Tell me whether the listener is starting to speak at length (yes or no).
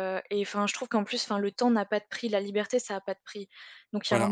no